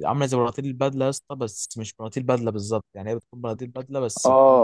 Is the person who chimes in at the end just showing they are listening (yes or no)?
no